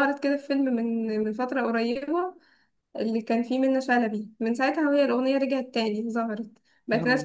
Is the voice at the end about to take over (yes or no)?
no